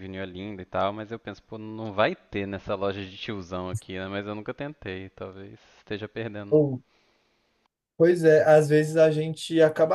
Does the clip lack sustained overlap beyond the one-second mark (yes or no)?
yes